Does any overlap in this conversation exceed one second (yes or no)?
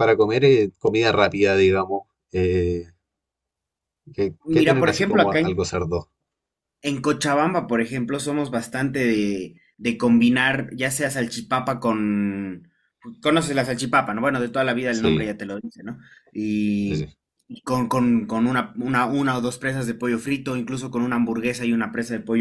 yes